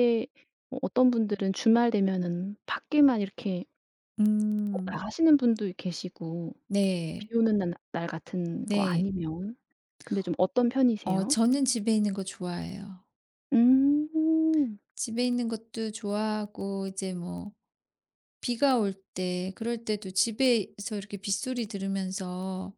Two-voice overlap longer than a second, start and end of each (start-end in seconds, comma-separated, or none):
none